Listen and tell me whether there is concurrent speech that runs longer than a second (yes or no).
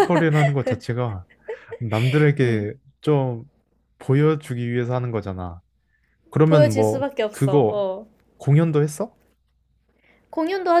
yes